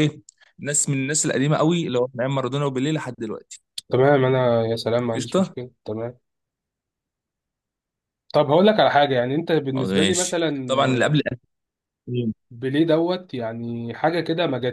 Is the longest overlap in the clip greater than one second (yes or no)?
yes